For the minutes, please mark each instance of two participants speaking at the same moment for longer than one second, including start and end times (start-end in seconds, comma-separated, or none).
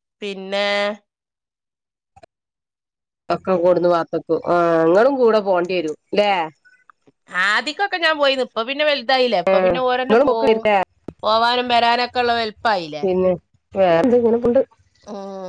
none